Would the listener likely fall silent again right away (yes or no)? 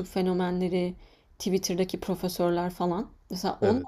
yes